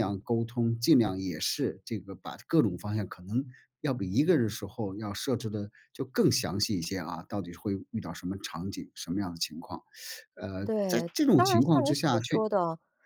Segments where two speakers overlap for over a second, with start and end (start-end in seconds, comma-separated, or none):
10.6-12.4